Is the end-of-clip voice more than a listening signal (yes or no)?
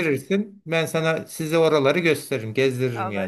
yes